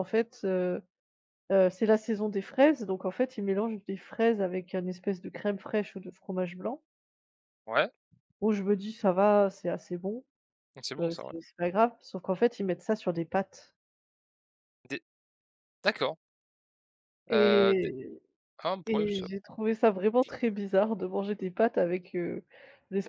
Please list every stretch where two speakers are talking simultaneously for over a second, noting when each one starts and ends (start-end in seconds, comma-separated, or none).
none